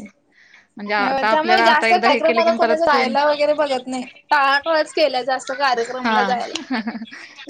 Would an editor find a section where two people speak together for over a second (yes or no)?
yes